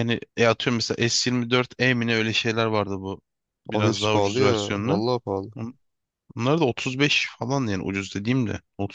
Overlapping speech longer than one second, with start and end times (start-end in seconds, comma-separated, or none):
3.7-5.0